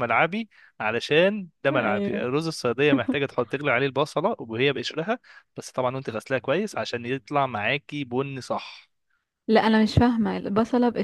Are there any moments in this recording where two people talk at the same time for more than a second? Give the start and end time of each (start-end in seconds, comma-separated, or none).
none